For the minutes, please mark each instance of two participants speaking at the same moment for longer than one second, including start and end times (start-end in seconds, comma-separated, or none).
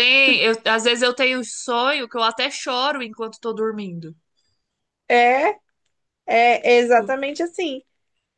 none